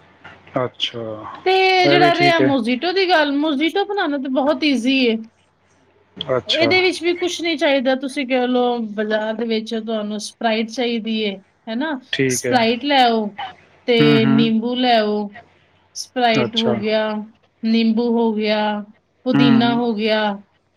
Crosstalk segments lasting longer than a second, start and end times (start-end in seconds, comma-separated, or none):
none